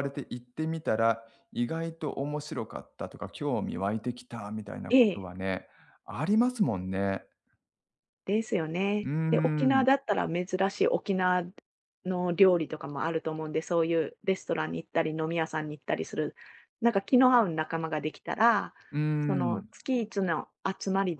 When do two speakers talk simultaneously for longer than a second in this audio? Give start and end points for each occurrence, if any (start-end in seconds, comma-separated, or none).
none